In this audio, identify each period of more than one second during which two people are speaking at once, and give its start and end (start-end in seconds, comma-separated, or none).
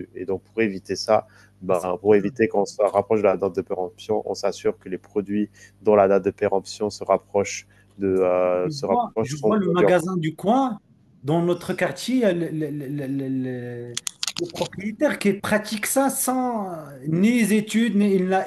8.6-10.1